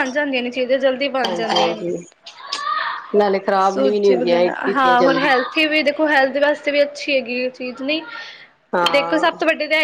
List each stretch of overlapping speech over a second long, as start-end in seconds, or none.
3.7-5.3